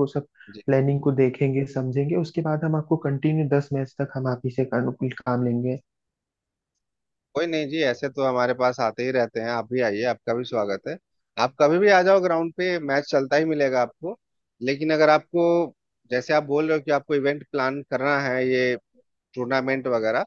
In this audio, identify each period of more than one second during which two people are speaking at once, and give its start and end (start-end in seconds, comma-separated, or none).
none